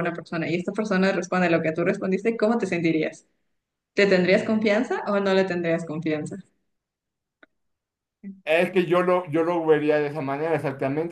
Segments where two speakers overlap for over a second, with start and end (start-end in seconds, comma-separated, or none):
none